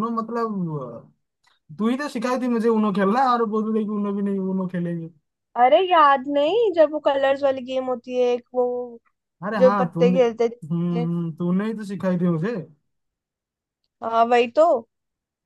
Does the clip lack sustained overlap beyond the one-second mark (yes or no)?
no